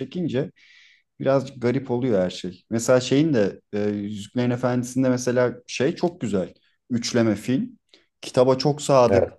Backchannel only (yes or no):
yes